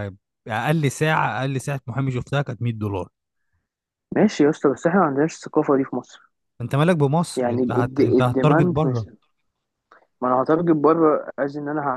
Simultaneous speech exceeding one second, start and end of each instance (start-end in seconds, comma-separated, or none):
7.4-9.1